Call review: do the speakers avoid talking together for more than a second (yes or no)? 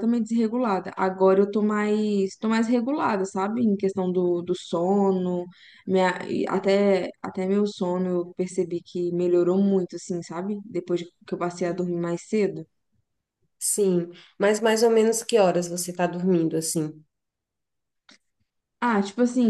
yes